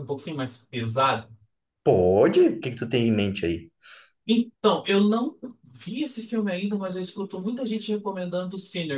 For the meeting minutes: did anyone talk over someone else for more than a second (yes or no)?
no